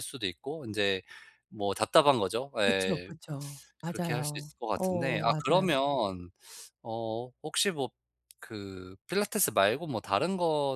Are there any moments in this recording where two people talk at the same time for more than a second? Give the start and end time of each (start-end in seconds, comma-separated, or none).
3.9-5.7